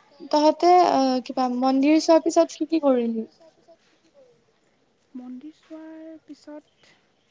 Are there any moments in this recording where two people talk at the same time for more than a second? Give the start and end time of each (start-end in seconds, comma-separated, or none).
none